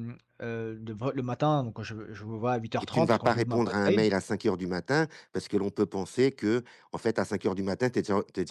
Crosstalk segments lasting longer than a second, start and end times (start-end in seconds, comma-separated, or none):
2.8-4.0